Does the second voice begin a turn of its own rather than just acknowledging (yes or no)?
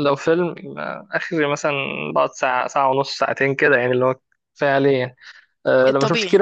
no